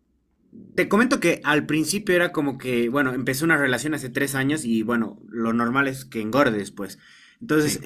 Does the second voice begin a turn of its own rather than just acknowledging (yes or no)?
no